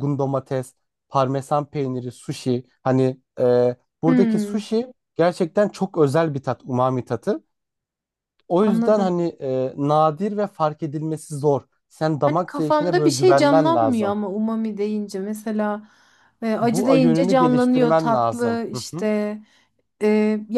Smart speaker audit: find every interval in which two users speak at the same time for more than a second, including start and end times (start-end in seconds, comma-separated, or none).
12.2-14.2, 16.6-19.1